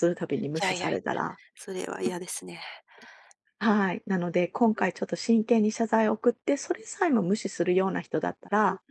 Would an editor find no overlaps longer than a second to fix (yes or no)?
yes